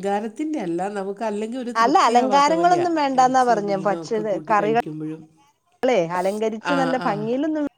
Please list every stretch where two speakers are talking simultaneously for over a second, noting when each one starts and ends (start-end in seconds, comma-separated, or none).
1.8-3.8